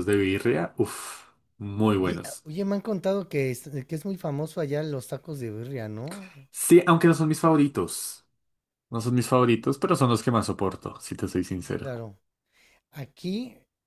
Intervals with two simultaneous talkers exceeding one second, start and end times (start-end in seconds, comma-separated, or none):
none